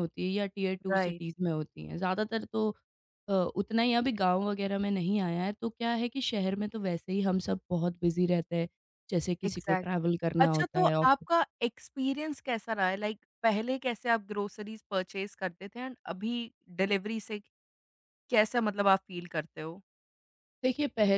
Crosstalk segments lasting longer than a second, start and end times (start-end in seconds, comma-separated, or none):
9.5-11.3